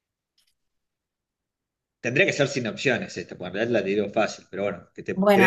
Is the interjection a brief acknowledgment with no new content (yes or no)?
no